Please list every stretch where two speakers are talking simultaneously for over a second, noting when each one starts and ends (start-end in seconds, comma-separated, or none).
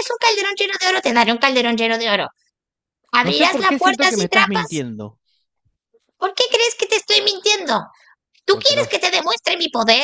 3.2-4.8